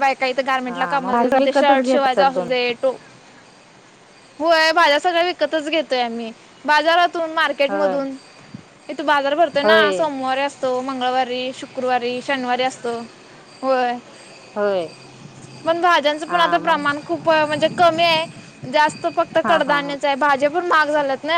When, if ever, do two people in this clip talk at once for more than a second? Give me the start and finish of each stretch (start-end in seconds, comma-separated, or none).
0.7-2.5